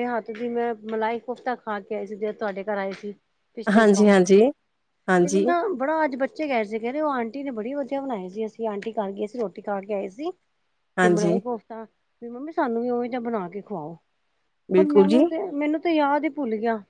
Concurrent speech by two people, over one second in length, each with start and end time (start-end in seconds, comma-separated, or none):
none